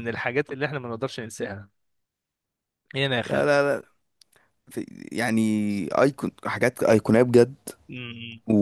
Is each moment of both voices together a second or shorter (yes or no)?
yes